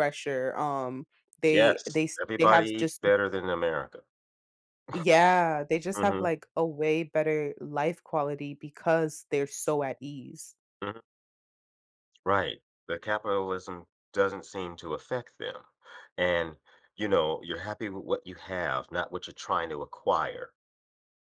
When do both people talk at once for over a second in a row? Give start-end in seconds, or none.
1.5-3.0